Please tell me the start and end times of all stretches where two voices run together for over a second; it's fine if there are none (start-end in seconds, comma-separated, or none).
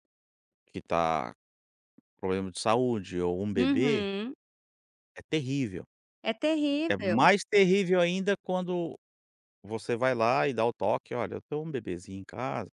none